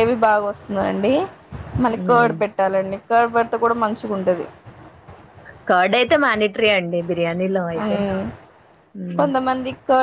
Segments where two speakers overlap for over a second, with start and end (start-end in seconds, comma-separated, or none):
none